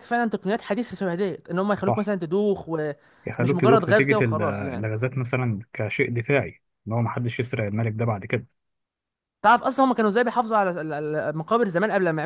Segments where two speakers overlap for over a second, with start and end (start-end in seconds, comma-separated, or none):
3.3-4.9